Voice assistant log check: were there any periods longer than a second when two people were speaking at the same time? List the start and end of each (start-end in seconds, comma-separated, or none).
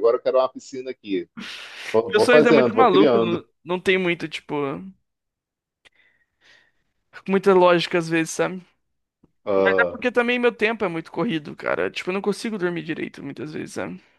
2.1-3.4